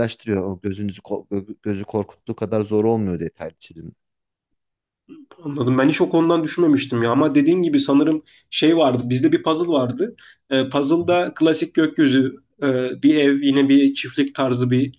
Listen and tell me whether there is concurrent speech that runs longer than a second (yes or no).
no